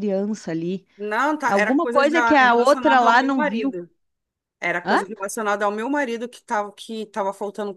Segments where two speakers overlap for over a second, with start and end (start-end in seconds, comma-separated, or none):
1.5-3.7